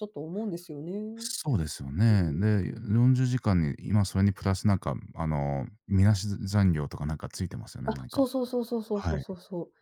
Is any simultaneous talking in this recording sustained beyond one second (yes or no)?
no